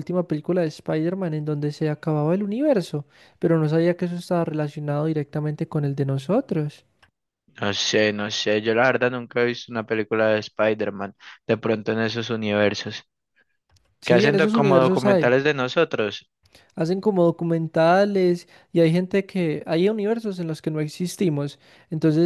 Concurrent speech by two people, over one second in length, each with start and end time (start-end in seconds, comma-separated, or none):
14.0-15.3